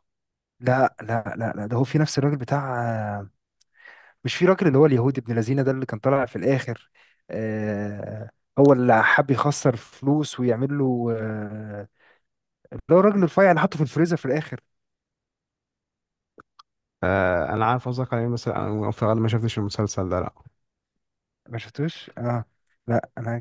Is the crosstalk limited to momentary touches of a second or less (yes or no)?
yes